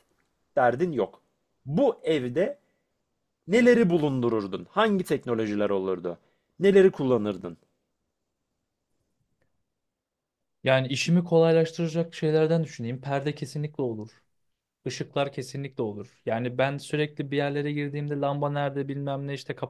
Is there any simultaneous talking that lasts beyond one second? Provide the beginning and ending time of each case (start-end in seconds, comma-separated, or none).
none